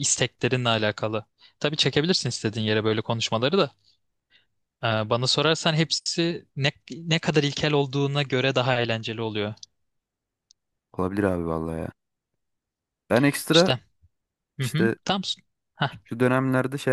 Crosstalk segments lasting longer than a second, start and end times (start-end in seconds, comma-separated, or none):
none